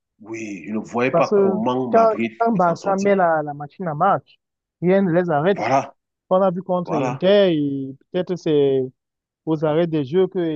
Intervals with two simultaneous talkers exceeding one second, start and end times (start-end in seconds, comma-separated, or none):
1.1-3.1